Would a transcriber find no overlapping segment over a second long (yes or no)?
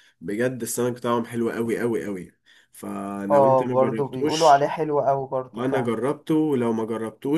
no